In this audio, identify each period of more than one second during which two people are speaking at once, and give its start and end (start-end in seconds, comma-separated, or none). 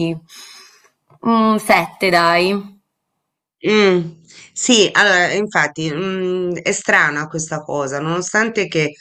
none